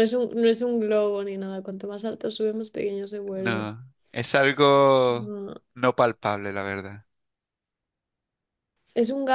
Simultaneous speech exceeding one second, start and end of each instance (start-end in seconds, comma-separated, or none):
none